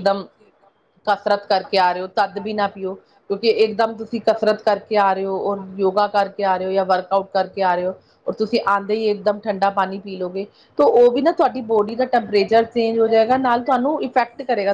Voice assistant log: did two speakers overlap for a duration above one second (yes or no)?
yes